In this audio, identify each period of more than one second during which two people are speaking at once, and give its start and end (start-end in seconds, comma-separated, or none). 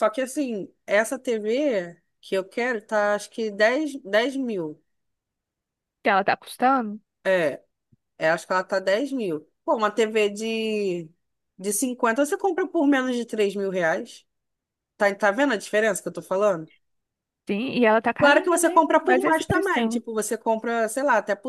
18.2-20.0